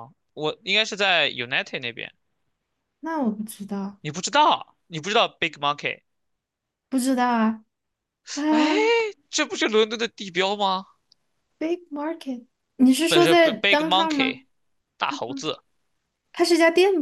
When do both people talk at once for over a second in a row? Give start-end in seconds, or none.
13.1-14.4